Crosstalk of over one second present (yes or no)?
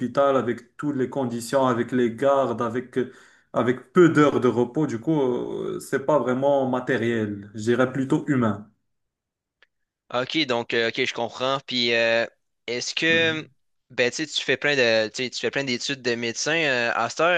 no